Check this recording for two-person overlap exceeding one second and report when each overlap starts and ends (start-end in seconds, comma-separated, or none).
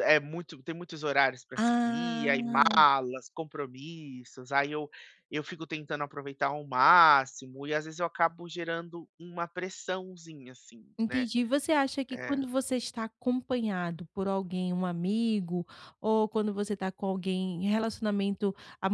1.6-2.9